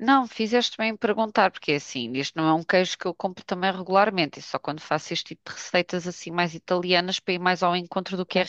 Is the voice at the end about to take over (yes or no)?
yes